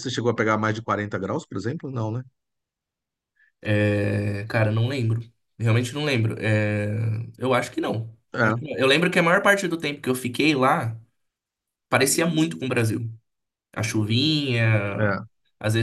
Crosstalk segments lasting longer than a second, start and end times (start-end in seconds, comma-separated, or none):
none